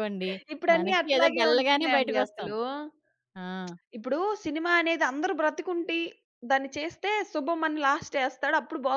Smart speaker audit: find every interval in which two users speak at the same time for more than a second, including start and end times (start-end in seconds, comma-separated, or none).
0.8-2.5